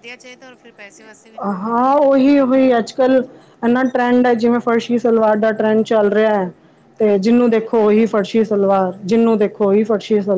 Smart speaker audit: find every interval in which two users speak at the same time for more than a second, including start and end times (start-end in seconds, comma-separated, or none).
7.0-8.5